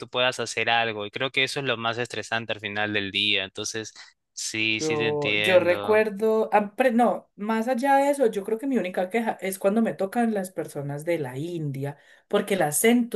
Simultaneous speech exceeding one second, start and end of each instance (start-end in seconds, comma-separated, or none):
4.8-6.0